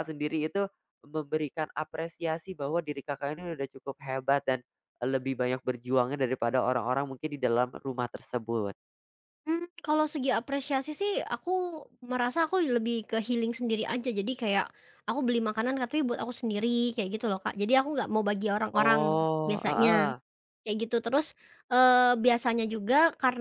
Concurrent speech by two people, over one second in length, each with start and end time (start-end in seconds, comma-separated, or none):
18.7-20.1